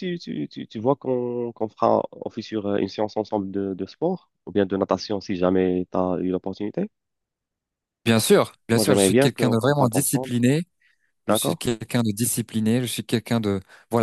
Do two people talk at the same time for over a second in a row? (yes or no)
yes